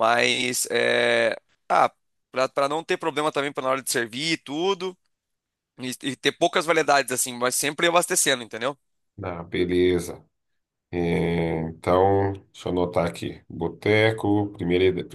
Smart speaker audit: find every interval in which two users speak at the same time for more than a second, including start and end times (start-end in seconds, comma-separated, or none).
none